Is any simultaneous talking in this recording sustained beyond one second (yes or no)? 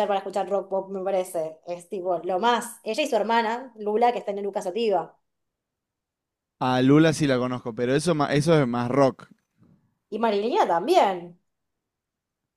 no